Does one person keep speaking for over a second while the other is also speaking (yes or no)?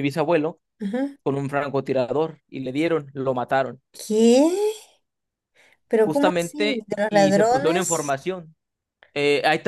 yes